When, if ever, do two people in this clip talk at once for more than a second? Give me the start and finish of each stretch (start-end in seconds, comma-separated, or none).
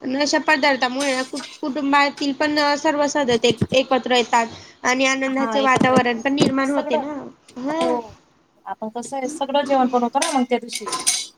5.4-7.0